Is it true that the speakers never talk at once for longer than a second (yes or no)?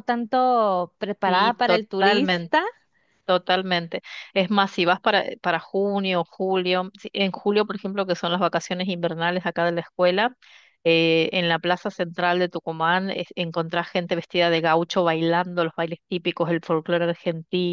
no